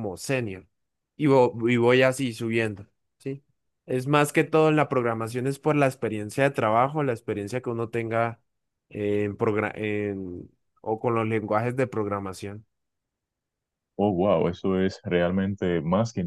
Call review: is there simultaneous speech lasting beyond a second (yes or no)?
no